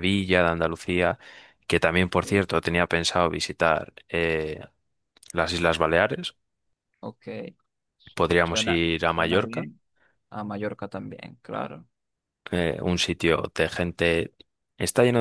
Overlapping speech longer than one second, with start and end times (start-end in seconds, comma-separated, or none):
8.4-9.7